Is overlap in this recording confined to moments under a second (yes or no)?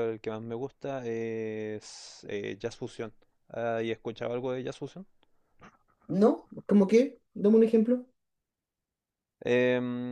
yes